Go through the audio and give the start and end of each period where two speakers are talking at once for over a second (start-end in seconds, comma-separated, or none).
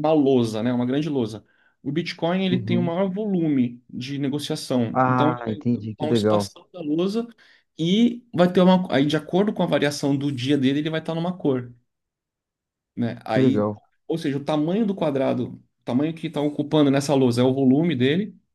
4.9-6.5